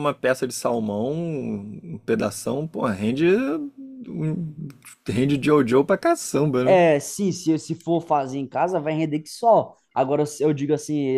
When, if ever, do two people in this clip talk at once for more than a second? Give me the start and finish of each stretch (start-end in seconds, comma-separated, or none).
none